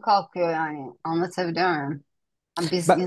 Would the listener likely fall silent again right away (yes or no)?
yes